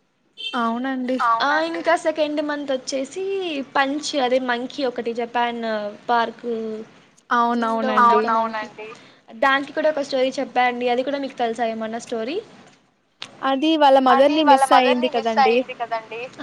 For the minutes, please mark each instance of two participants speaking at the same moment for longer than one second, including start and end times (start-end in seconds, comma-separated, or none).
none